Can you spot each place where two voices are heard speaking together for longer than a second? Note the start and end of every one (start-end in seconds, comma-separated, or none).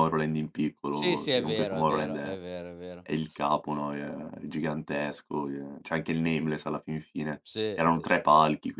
0.9-2.4